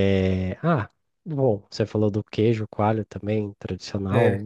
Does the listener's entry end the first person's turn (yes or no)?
no